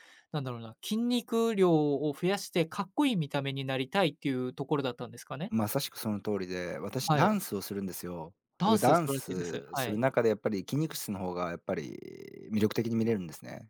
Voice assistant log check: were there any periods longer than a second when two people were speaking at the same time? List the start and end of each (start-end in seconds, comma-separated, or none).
8.6-10.0